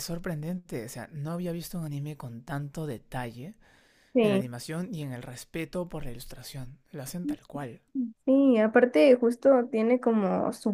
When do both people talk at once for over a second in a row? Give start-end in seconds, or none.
none